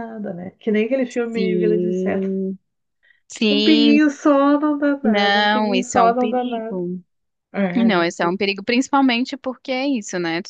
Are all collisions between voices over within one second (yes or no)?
no